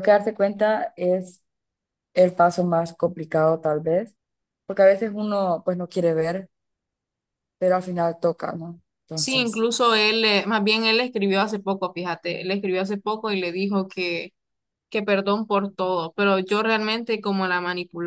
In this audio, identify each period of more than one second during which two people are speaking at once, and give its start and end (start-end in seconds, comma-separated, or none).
none